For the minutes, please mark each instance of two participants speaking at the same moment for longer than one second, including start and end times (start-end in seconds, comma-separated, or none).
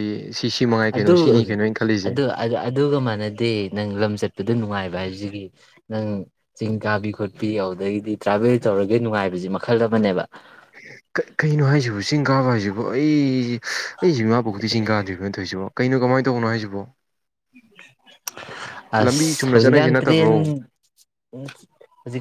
19.0-20.3